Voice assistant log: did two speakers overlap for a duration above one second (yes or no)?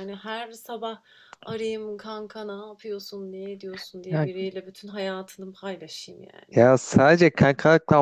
no